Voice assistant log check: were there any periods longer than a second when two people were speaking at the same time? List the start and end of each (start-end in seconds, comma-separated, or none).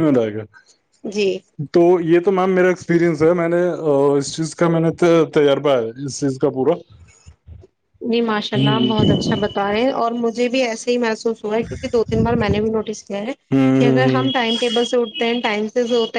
none